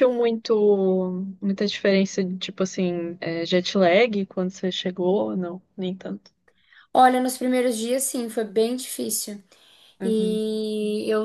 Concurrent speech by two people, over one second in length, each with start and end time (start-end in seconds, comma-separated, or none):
none